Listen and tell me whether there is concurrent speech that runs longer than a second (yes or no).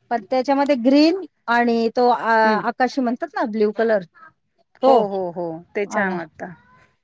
no